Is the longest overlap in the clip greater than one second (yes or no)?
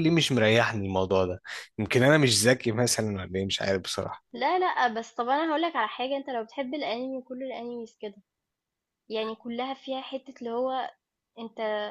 no